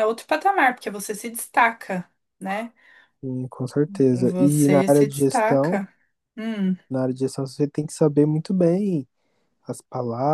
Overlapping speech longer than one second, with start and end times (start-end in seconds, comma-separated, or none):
4.1-5.8